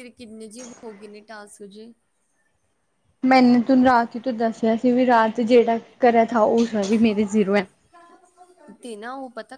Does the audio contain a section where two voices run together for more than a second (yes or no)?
no